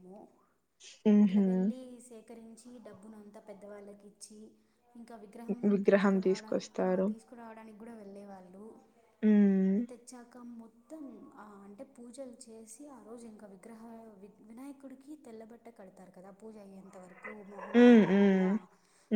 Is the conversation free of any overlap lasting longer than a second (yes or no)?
no